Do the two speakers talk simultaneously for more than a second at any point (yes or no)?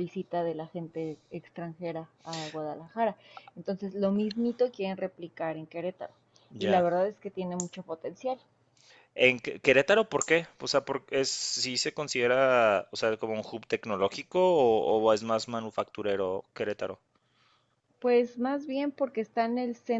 no